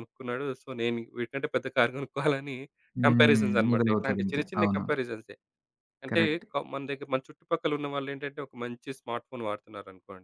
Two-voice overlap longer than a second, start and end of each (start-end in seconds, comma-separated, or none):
3.1-4.8